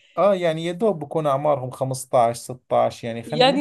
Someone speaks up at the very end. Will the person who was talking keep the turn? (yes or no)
no